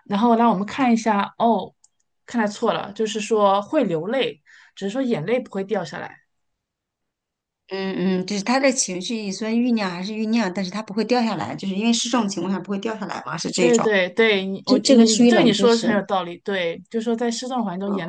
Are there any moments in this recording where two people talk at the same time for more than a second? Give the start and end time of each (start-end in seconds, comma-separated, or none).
14.6-16.0